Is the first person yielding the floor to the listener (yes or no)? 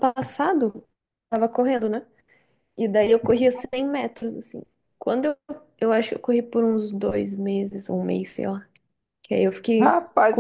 yes